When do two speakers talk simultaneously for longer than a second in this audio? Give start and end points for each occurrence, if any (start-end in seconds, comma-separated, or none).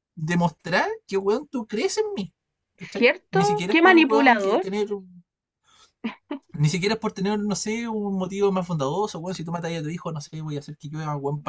3.0-4.7